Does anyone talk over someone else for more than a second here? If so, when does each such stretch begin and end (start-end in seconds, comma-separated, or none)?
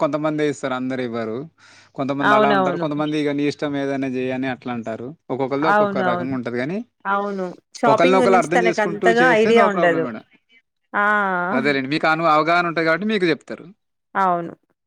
7.9-10.0